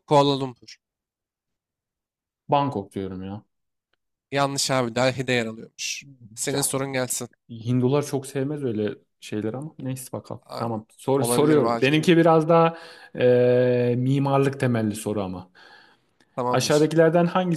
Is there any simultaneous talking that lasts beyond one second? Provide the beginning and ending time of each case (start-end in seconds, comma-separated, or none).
10.5-12.1